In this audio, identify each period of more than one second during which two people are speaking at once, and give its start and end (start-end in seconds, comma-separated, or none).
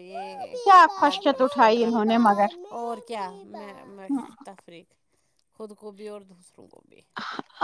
0.7-2.5